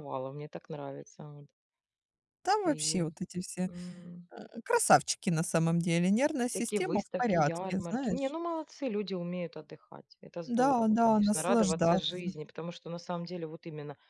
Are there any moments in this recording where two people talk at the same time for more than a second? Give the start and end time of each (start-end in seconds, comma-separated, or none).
6.5-8.3, 10.6-12.3